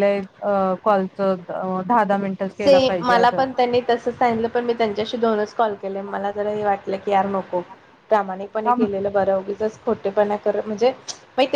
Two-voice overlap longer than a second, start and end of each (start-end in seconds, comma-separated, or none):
none